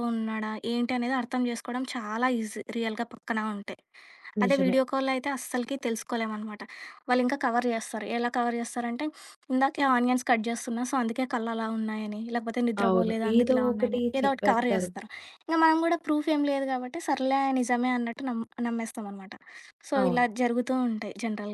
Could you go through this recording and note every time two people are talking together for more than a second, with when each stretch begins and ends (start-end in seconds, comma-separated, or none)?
12.8-14.9